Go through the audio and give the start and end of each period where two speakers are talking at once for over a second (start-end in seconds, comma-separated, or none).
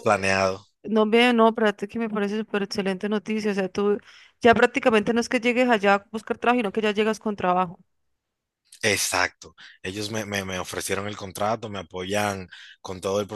none